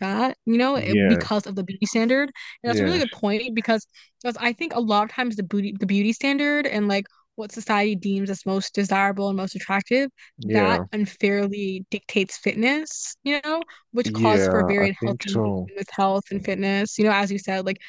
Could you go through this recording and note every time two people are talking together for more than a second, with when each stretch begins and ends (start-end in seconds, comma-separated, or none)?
14.1-15.7